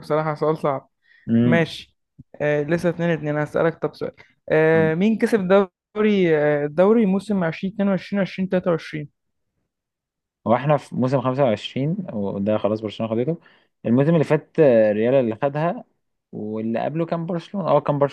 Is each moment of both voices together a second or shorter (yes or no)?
yes